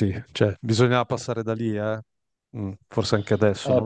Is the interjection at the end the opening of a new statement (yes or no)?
yes